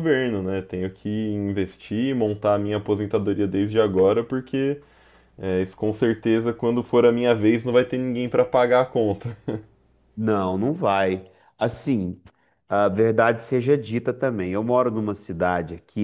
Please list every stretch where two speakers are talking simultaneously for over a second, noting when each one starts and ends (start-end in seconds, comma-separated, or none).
none